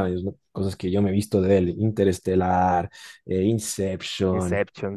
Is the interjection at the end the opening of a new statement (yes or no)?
no